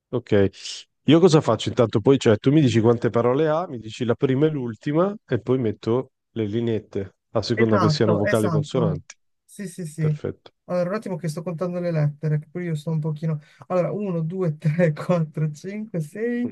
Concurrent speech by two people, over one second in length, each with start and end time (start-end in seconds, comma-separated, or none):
7.5-9.0